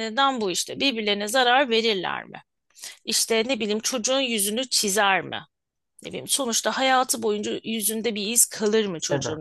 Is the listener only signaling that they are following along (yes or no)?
yes